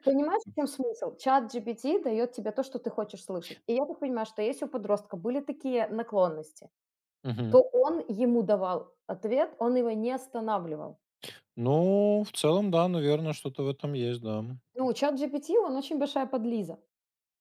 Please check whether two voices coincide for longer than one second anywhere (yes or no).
no